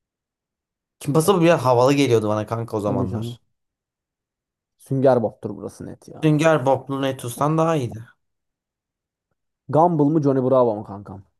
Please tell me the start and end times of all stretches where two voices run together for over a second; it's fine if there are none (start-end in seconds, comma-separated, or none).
none